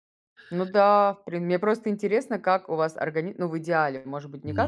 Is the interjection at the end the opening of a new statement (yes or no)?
no